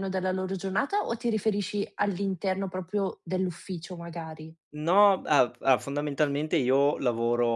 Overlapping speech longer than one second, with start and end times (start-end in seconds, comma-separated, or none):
none